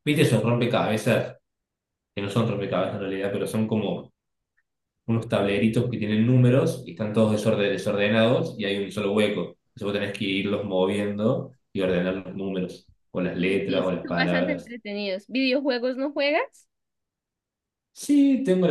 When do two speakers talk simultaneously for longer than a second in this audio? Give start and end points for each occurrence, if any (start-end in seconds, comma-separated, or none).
13.3-14.7